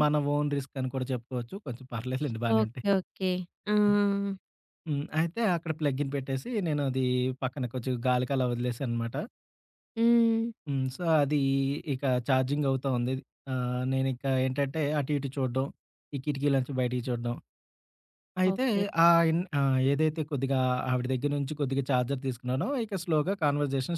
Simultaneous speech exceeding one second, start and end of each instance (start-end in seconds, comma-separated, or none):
none